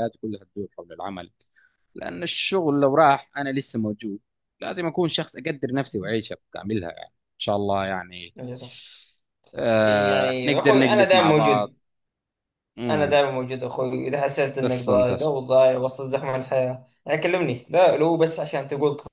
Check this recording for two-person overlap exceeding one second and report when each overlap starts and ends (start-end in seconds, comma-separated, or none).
9.8-11.7